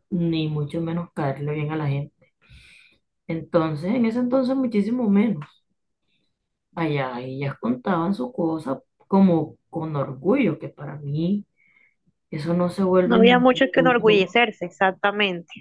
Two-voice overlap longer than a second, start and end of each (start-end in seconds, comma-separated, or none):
13.0-14.4